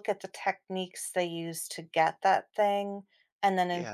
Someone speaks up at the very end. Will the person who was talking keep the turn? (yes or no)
yes